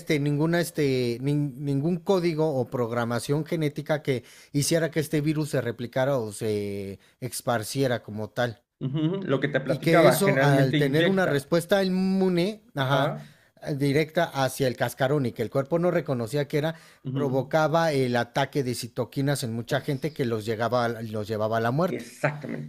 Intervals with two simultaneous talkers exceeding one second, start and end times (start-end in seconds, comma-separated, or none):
9.7-11.5